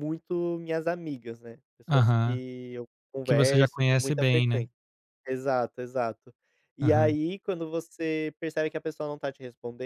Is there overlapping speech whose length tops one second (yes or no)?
yes